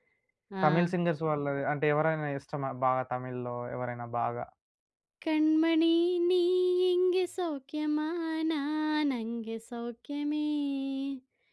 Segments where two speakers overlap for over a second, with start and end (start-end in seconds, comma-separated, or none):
none